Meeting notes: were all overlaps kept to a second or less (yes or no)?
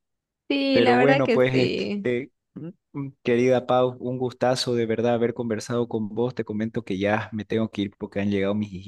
no